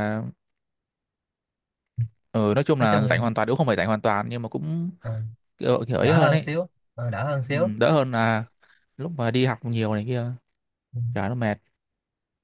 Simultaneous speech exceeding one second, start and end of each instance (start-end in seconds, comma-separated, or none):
none